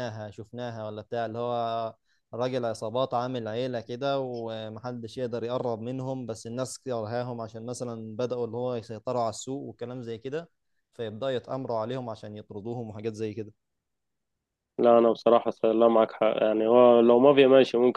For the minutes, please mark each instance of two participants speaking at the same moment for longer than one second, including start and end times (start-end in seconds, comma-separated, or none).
none